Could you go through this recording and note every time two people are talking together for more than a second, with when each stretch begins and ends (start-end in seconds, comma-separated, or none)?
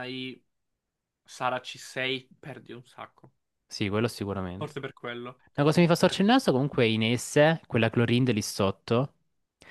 none